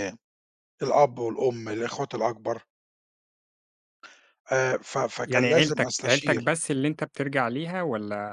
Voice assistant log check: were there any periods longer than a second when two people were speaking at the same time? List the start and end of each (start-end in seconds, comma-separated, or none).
5.2-6.4